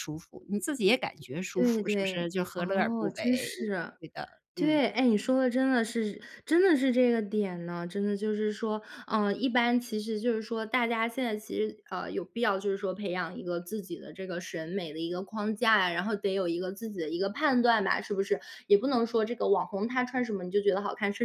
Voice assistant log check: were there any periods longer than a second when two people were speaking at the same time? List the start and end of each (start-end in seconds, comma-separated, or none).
1.6-3.5